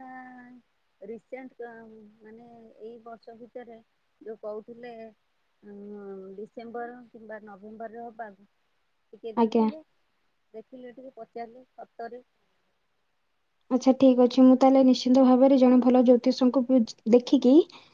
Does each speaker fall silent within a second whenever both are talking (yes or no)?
yes